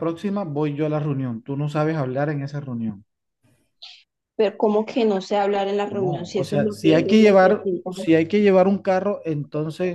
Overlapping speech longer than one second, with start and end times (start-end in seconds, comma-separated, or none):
5.9-8.0